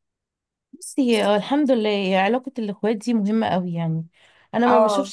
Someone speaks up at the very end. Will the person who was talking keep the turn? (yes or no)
yes